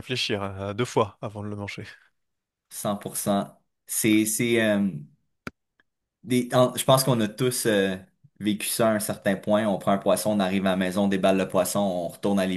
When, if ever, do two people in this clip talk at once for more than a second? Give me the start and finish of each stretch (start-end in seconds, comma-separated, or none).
none